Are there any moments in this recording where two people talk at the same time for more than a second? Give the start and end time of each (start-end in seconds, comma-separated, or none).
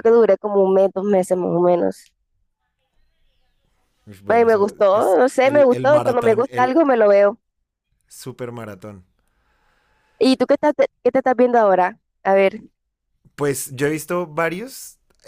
4.3-6.8